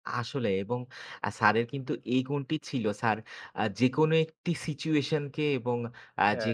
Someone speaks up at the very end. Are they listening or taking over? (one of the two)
listening